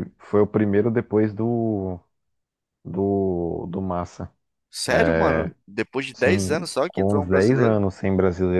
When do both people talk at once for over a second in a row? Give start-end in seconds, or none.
6.1-7.8